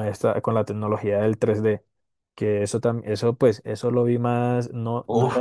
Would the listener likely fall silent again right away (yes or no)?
no